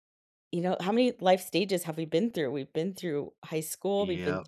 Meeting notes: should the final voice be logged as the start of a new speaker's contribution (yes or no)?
no